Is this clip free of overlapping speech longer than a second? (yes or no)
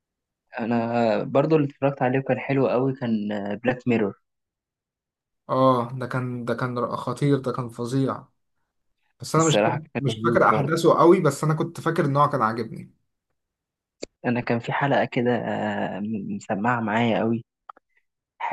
no